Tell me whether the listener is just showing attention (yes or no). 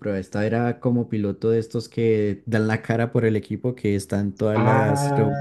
no